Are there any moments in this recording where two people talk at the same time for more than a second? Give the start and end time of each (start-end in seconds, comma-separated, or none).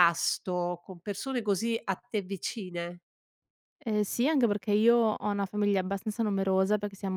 none